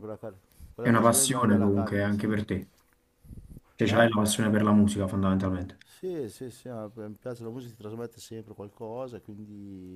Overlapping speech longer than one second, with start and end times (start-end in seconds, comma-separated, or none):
0.8-2.3